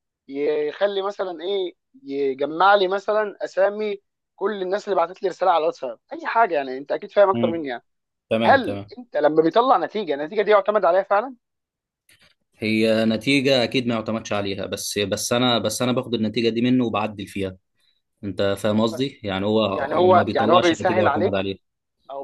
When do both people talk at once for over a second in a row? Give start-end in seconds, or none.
19.7-21.5